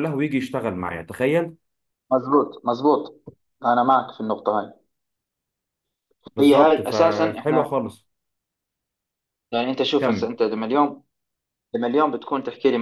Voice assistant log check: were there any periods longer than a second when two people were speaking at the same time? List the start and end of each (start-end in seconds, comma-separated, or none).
6.4-7.7